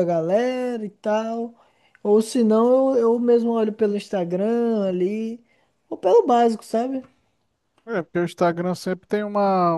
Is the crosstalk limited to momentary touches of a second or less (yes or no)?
yes